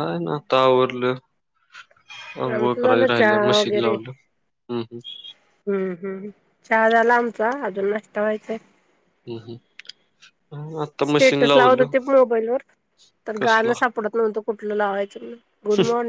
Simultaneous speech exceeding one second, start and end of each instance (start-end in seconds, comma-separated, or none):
2.5-3.9